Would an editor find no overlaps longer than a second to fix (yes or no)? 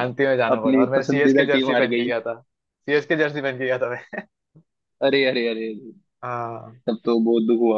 no